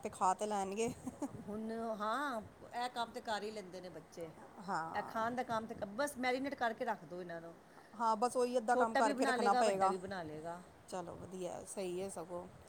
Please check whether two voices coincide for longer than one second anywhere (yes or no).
yes